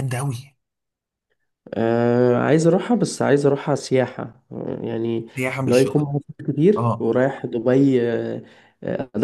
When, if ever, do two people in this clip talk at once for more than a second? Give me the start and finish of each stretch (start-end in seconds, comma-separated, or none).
none